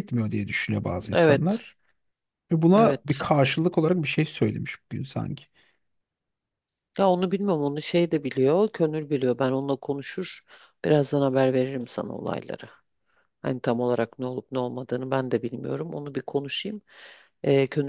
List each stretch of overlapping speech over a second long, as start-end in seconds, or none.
none